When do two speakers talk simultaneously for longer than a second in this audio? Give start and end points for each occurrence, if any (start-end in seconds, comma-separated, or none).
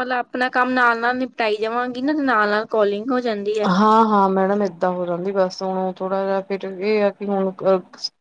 none